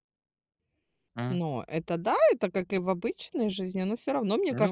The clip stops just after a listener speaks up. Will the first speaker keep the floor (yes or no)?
yes